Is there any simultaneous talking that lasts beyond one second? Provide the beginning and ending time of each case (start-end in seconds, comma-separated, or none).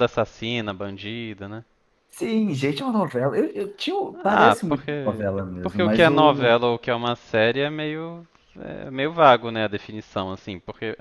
4.2-6.6